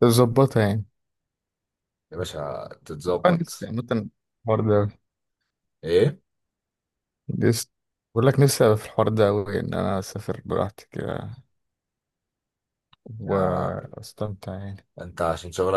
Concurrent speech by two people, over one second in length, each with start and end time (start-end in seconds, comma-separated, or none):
none